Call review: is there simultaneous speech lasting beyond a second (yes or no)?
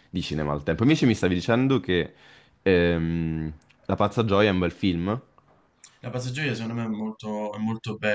no